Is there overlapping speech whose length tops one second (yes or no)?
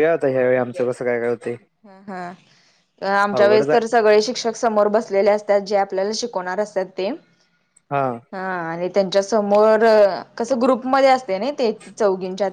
no